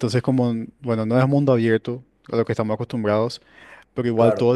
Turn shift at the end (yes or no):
no